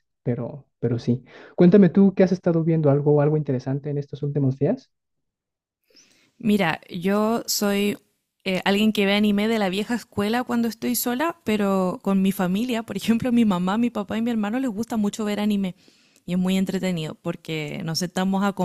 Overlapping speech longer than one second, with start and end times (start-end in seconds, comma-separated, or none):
none